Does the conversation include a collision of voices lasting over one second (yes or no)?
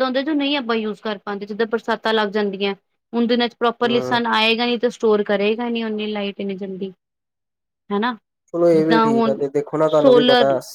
no